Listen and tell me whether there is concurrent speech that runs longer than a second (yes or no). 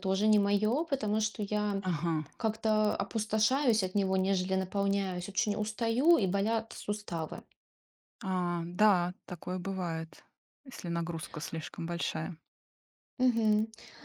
no